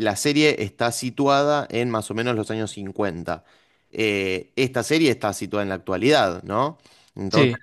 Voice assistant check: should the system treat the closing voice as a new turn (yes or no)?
no